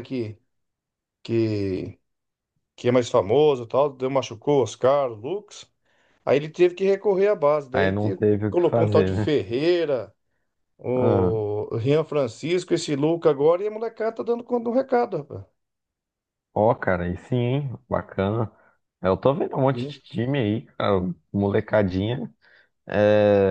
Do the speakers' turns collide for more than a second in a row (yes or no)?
yes